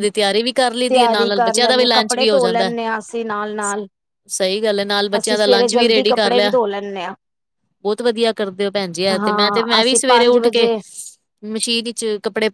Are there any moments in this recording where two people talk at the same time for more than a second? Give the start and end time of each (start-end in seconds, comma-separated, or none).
0.9-2.7, 5.2-6.5, 9.2-10.7